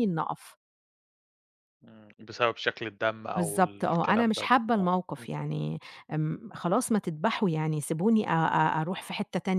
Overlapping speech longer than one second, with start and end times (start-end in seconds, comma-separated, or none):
3.4-5.3